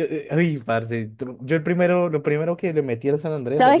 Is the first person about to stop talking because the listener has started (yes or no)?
yes